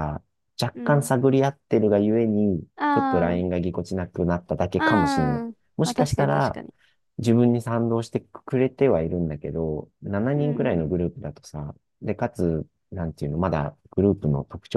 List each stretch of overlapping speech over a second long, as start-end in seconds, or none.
4.8-6.6